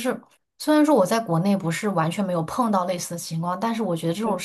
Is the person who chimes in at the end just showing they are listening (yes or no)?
yes